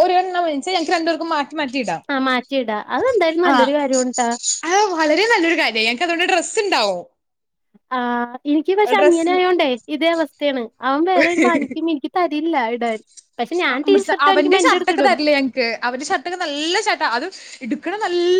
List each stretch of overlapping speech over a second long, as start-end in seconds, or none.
none